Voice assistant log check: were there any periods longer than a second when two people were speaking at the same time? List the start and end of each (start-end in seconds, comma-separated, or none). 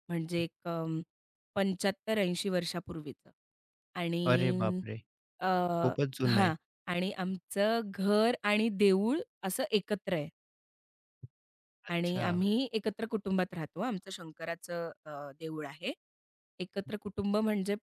none